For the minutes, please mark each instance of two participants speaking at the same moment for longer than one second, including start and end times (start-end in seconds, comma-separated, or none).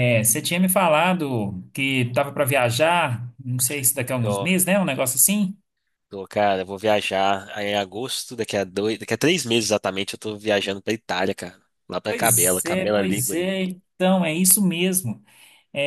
12.0-13.5